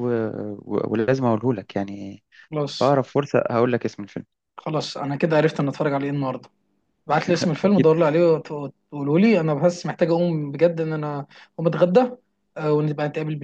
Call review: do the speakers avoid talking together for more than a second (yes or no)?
yes